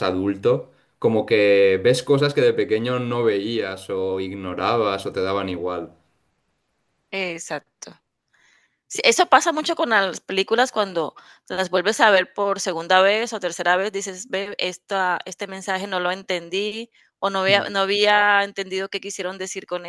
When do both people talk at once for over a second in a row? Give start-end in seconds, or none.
none